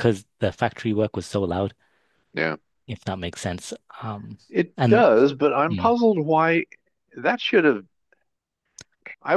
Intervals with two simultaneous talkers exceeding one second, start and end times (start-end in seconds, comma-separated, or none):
none